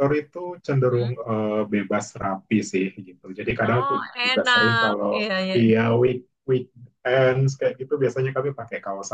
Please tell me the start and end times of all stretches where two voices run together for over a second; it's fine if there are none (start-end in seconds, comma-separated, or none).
3.7-5.6